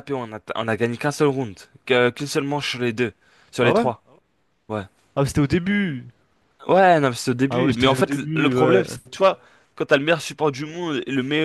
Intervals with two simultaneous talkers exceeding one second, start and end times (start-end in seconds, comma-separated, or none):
7.5-8.8